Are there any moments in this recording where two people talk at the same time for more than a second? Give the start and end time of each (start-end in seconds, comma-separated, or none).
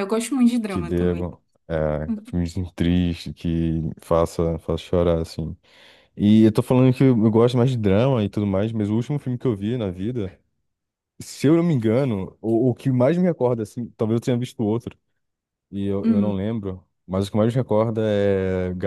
none